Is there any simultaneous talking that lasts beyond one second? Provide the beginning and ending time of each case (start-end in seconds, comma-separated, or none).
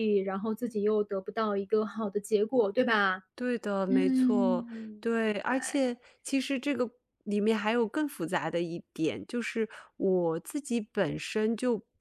3.9-5.9